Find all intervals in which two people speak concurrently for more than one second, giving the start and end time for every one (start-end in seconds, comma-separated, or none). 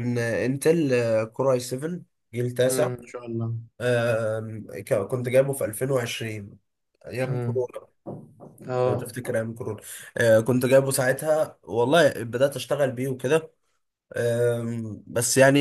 none